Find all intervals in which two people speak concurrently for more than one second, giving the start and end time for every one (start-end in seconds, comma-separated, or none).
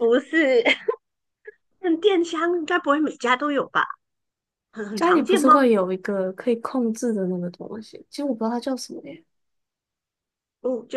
none